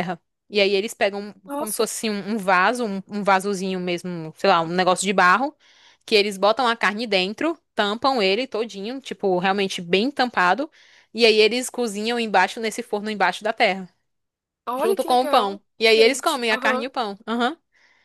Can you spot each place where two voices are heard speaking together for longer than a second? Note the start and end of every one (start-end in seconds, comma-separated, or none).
14.8-16.9